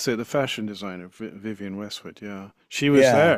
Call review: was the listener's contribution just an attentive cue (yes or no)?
no